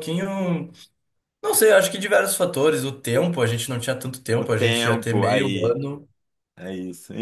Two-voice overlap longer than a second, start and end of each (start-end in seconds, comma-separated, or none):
4.3-5.8